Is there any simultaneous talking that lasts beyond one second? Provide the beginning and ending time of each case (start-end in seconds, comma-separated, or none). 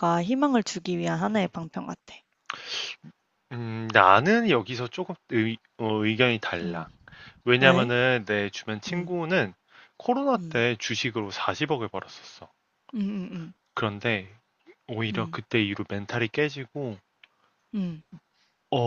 none